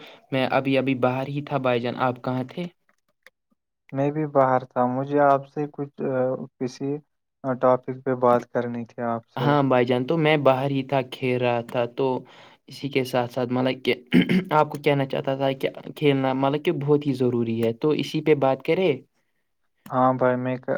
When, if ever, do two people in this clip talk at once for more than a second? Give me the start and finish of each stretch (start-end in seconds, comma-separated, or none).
none